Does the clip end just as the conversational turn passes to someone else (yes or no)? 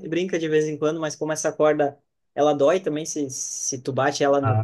no